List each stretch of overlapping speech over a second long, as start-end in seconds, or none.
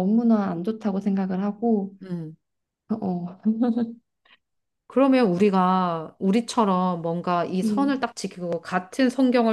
none